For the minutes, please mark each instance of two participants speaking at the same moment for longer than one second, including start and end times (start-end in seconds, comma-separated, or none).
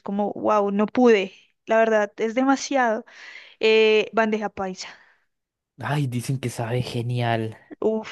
none